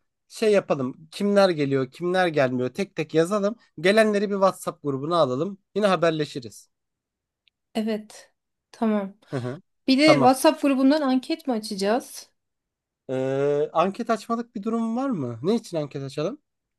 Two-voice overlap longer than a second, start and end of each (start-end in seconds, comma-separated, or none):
none